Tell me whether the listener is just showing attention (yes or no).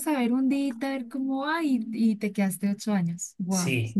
no